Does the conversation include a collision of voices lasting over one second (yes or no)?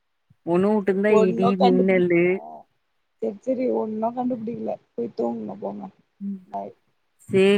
yes